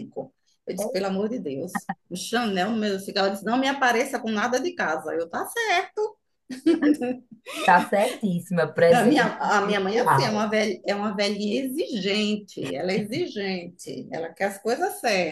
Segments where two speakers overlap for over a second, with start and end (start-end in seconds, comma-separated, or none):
8.9-10.5